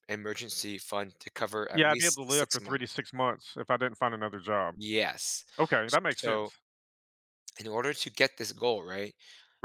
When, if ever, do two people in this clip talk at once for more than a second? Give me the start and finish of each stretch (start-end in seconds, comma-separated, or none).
1.7-2.9